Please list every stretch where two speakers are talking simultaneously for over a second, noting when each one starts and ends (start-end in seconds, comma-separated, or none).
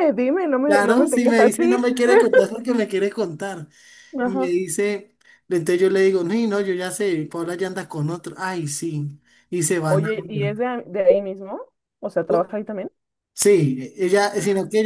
0.7-1.9